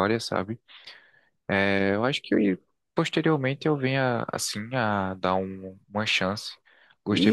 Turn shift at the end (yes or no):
yes